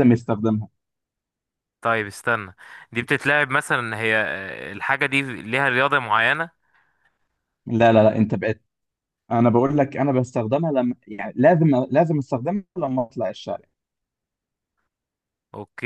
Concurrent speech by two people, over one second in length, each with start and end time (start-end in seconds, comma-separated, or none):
none